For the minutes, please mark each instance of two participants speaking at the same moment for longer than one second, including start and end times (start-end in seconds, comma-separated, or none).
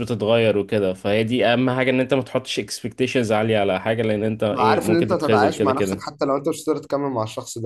4.6-6.2